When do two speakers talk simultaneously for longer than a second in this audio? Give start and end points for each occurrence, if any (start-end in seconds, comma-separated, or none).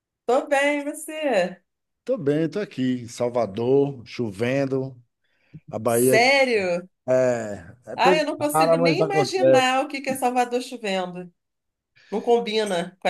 8.0-9.8